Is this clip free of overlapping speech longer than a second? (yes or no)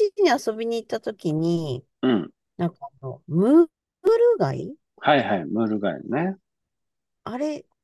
yes